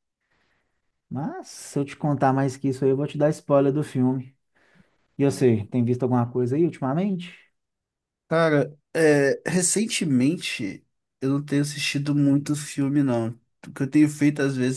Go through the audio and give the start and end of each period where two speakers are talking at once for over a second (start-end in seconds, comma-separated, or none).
none